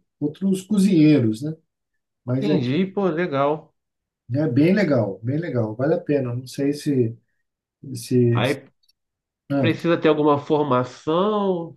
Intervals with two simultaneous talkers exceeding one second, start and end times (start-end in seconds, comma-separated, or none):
none